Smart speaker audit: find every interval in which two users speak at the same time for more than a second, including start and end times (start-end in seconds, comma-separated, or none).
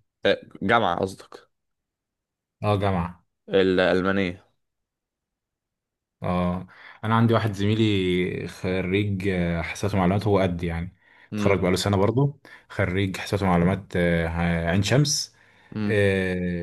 none